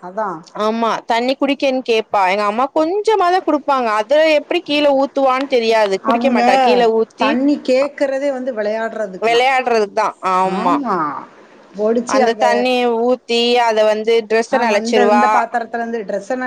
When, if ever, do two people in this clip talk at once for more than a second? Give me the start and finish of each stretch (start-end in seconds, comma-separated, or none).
none